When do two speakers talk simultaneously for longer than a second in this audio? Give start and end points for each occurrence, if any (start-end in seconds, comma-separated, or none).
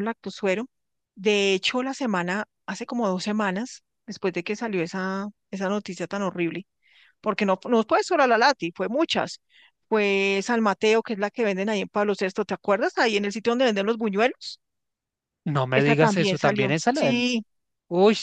15.7-17.3